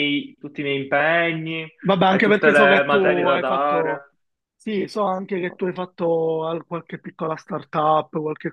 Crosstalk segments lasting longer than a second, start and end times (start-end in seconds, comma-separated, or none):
2.1-4.1